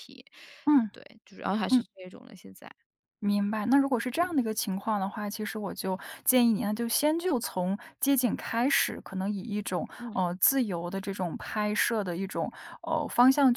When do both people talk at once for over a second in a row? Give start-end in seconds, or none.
none